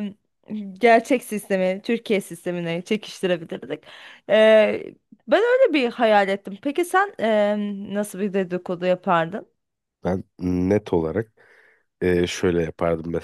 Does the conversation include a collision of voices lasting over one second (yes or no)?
no